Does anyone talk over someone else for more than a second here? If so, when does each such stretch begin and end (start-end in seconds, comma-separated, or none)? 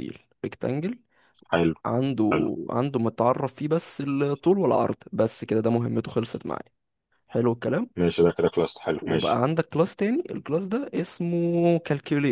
none